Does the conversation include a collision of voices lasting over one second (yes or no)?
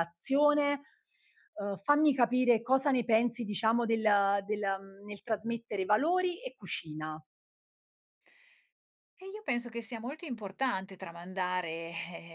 no